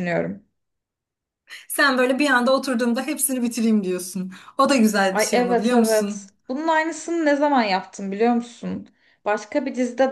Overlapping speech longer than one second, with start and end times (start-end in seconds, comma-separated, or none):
5.1-6.3